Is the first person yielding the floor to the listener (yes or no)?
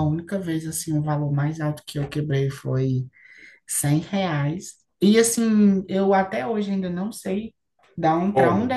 no